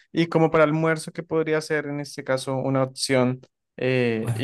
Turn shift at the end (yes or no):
no